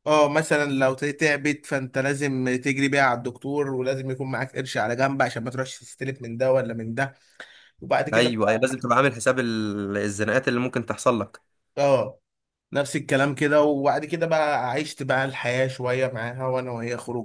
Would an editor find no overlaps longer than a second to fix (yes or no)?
yes